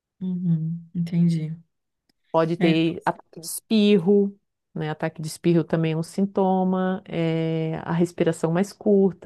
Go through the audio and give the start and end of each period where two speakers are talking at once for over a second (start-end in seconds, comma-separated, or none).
none